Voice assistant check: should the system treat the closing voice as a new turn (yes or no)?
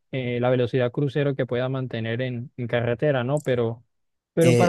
yes